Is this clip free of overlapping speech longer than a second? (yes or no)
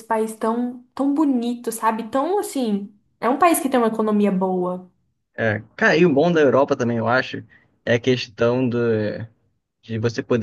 yes